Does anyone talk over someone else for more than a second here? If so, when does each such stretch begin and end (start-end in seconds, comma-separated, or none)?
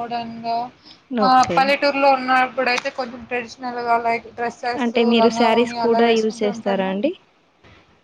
4.8-6.9